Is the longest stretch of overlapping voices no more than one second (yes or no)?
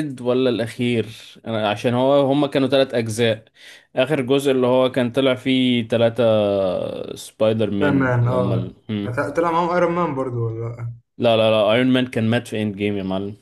no